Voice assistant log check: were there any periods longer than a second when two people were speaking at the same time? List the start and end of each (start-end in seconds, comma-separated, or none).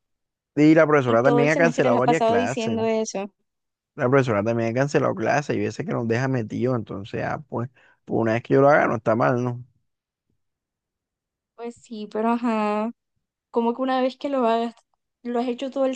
1.1-2.8